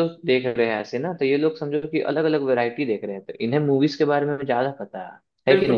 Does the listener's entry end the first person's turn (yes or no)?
yes